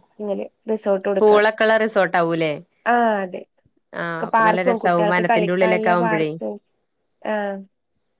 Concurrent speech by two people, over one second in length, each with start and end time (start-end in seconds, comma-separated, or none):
4.4-6.3